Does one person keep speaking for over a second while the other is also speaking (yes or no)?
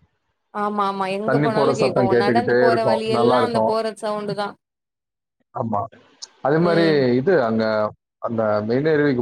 yes